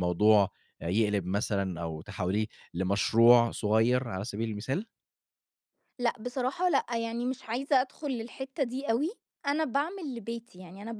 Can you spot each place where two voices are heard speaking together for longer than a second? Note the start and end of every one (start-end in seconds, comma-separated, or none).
none